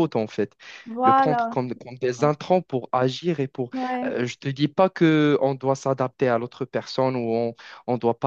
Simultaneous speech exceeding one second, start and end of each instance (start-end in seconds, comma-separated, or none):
1.0-2.4